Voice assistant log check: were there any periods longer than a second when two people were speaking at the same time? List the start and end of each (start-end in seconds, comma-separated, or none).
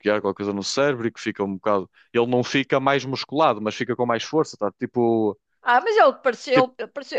none